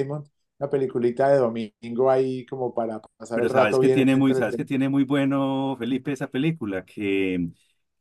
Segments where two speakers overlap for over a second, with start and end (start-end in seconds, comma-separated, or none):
3.3-4.7